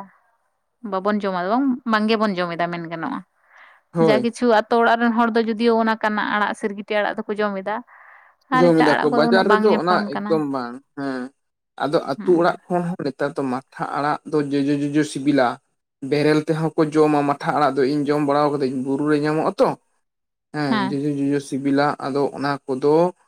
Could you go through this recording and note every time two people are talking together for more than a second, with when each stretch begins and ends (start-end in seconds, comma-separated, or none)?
8.6-10.4